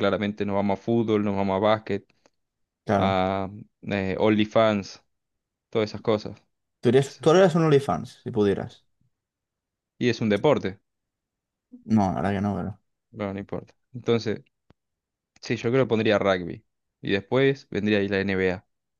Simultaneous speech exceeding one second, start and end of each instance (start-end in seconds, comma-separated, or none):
none